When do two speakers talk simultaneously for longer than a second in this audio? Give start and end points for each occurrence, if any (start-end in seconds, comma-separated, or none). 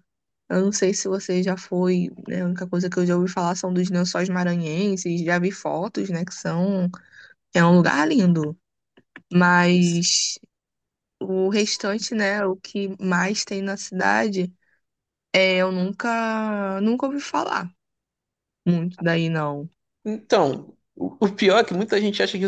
none